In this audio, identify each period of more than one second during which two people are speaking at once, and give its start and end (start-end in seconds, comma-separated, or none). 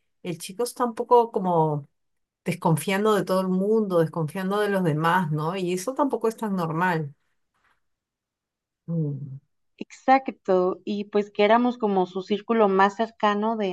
none